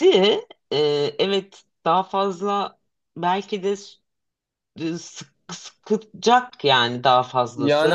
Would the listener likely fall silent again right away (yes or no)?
no